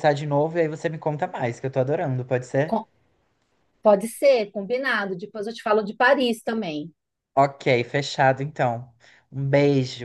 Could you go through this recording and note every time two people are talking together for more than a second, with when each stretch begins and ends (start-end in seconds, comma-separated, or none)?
none